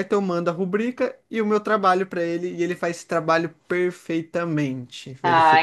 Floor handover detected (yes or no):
yes